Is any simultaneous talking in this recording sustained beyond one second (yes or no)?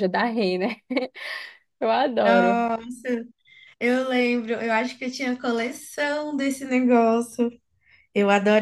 no